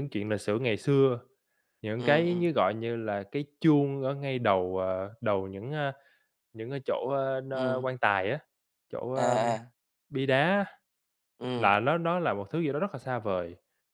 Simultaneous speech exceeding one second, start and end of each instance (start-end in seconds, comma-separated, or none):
none